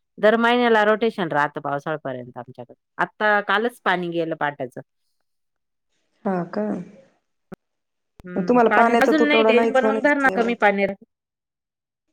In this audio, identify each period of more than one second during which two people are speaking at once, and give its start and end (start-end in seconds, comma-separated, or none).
8.3-10.5